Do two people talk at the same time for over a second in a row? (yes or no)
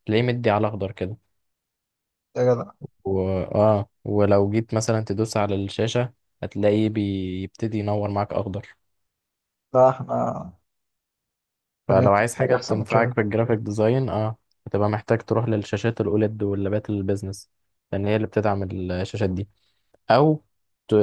yes